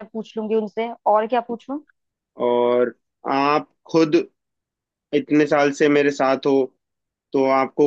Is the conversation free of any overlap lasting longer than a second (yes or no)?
yes